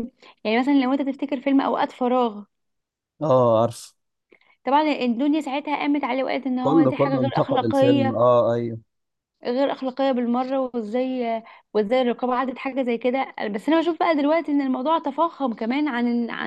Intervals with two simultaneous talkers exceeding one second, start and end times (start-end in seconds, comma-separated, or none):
6.6-8.2